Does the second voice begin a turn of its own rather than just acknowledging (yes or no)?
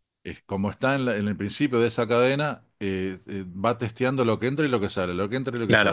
yes